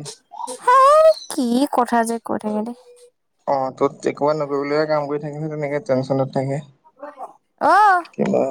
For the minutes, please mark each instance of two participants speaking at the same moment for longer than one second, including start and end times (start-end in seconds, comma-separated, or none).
none